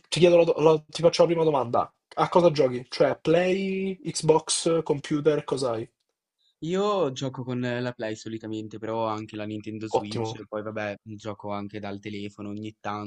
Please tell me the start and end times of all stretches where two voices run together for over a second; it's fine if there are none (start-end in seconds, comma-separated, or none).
none